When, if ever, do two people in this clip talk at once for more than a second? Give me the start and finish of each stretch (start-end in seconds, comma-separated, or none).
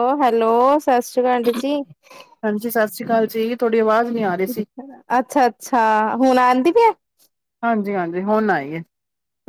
none